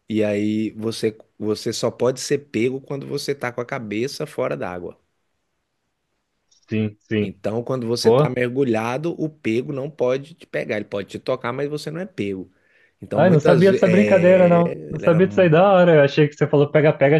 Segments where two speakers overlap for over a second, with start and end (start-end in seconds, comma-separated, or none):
13.1-15.2